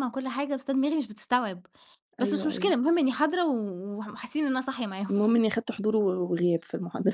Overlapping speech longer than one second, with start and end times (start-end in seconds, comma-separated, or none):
none